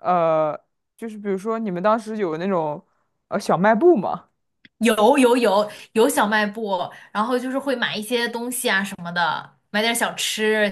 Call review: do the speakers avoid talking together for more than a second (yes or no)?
yes